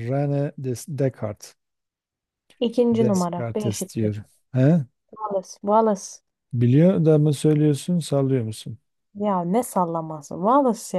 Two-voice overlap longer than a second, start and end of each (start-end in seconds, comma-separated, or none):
2.9-4.1